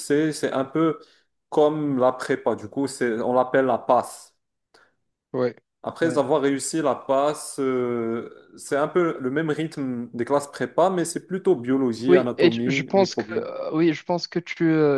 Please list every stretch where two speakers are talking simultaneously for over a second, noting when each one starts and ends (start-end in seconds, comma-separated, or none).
12.1-13.5